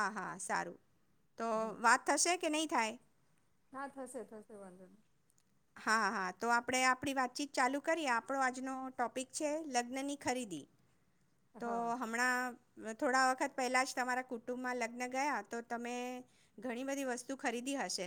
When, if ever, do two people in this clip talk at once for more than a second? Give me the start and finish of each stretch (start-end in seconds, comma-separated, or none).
none